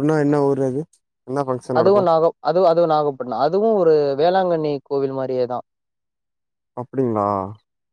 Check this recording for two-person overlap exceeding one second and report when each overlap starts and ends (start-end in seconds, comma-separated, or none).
none